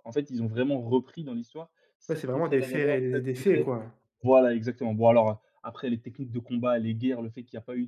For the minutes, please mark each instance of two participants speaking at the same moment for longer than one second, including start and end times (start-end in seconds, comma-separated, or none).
2.1-3.7